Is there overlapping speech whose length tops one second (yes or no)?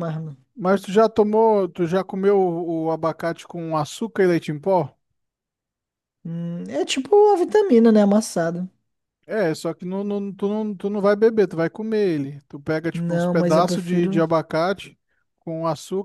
yes